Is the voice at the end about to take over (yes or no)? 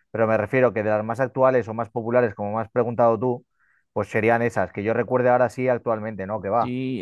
yes